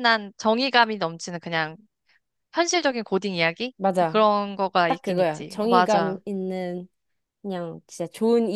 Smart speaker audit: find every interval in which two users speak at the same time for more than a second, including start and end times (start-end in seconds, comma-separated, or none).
4.9-6.2